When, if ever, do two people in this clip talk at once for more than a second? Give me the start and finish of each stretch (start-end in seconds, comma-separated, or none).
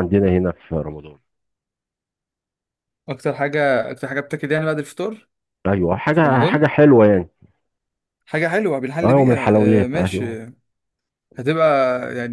9.0-10.4